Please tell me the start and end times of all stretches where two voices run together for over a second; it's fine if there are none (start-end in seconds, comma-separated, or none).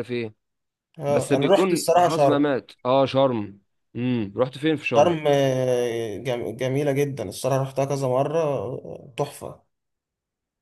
1.1-2.5